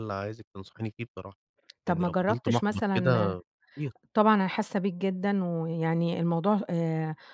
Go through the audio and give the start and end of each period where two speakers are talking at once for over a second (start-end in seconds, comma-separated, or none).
1.9-3.4